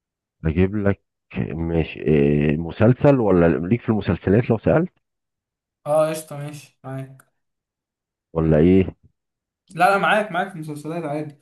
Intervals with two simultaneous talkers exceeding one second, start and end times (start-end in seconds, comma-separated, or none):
none